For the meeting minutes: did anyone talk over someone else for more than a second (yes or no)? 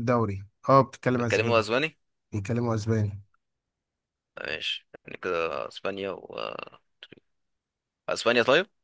no